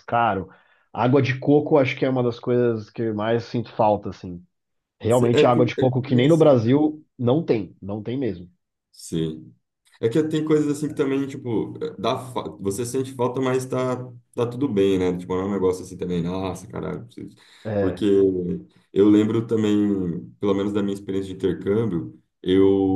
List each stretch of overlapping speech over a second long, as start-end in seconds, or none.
5.1-6.6